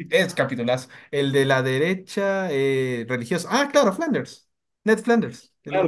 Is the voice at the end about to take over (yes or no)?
yes